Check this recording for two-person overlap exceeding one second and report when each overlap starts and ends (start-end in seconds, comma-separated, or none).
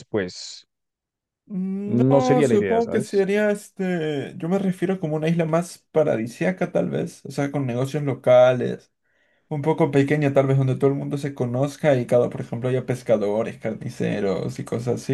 1.9-3.3